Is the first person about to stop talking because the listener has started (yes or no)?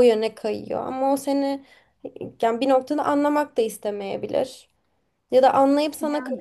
no